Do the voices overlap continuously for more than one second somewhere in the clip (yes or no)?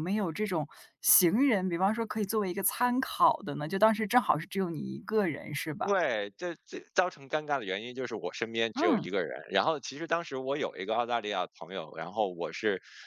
no